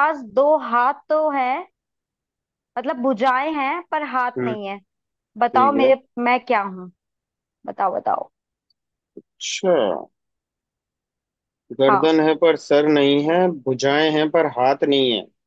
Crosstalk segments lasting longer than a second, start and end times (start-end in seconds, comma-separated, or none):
none